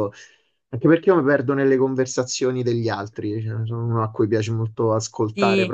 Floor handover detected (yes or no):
yes